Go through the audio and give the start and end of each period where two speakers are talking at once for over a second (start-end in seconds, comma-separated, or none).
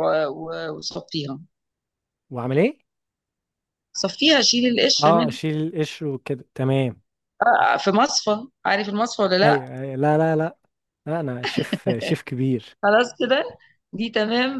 none